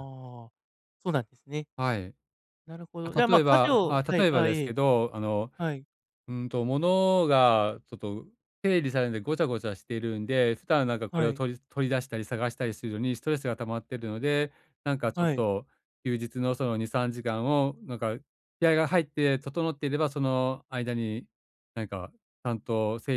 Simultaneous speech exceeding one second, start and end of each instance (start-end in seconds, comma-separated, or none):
3.0-4.7